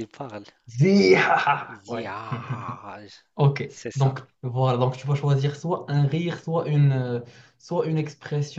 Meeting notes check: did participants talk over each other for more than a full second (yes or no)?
no